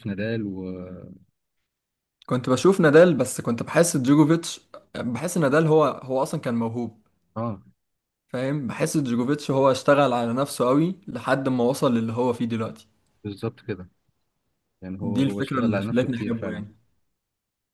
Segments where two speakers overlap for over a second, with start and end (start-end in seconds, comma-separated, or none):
15.0-16.6